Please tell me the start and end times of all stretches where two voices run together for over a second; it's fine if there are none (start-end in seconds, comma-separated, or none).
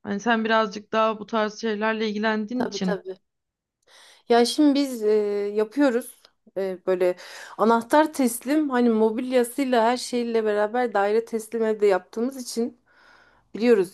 none